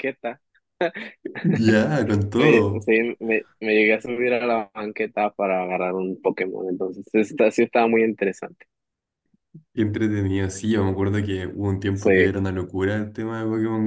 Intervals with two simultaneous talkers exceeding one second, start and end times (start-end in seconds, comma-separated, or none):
none